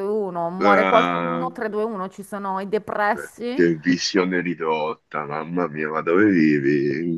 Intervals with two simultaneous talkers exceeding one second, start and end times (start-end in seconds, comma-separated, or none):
none